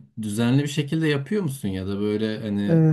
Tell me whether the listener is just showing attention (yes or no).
no